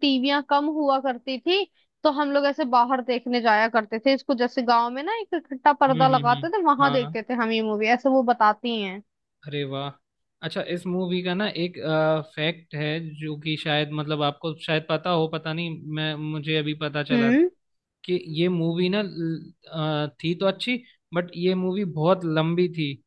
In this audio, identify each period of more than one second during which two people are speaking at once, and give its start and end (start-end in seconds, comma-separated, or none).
5.9-7.2